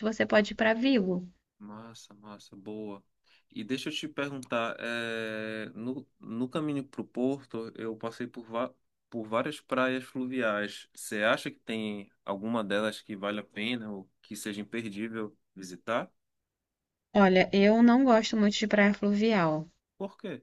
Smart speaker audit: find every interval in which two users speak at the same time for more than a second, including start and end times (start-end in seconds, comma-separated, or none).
none